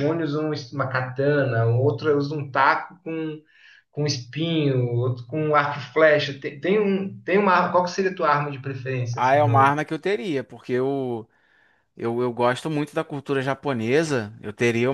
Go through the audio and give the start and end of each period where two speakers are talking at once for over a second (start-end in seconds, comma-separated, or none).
none